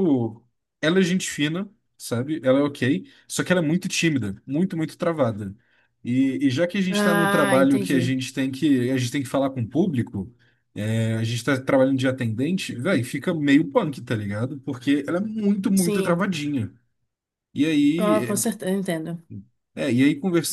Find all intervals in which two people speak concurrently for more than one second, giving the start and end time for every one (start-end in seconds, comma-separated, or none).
6.9-8.2